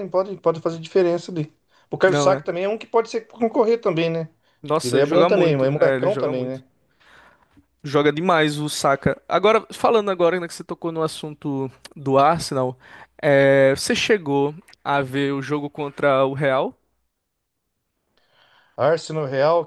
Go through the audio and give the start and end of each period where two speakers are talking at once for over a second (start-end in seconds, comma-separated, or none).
4.8-6.6